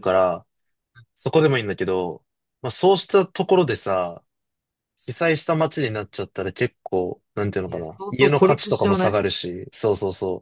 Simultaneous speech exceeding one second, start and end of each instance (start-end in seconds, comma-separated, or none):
7.7-9.2